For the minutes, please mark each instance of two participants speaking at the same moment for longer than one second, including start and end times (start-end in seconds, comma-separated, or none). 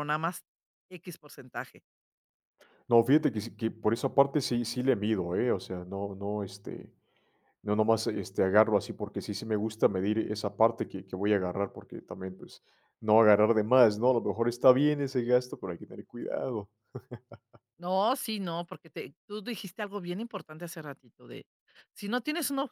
none